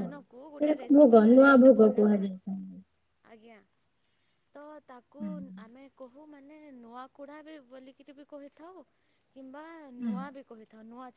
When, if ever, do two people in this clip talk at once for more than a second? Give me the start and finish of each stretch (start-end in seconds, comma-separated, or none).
0.6-2.3